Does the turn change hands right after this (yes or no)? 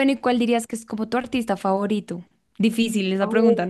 yes